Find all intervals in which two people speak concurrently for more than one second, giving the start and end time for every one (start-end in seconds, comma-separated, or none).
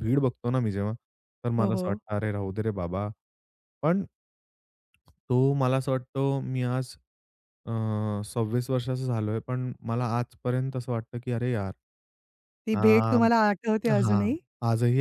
none